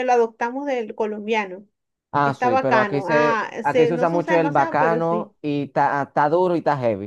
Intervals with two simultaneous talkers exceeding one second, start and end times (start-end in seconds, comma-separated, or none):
2.2-5.3